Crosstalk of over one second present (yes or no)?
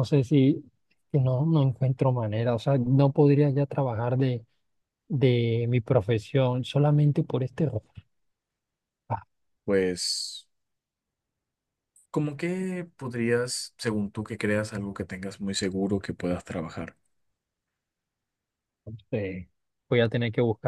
no